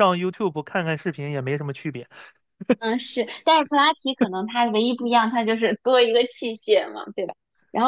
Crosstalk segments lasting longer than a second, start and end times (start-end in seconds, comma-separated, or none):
none